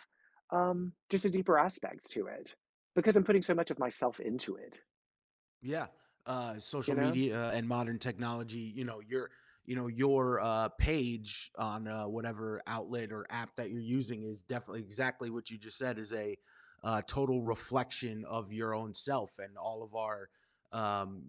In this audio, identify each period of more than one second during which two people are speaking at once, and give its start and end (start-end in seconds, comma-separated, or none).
none